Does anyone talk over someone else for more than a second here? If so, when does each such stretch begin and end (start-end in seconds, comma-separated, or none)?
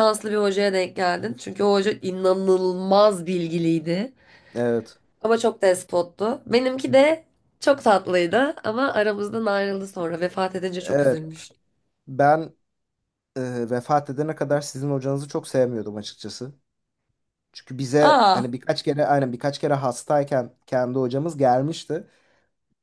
none